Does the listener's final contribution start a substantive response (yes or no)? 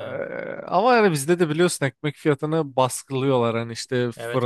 yes